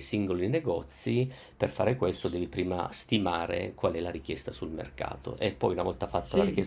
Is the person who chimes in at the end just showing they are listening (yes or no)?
yes